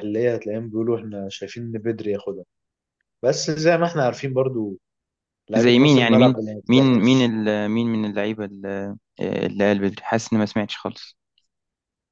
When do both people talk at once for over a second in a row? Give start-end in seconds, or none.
5.6-7.3